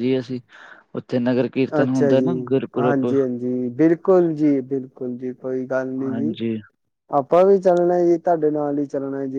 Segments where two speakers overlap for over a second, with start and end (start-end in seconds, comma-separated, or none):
none